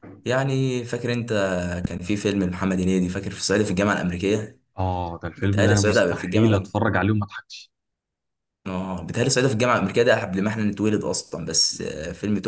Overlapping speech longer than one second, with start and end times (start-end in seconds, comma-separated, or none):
5.4-6.7